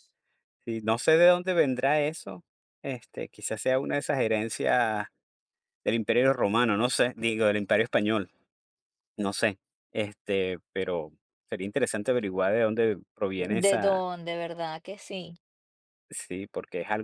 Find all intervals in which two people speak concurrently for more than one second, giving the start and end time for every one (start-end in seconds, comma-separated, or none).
none